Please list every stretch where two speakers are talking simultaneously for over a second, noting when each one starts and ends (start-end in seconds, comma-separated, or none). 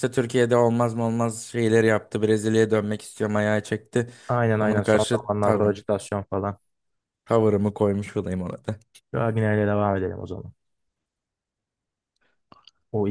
4.5-5.8